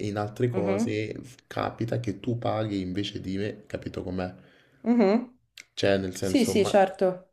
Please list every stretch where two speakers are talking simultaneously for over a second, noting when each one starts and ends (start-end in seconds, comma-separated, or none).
none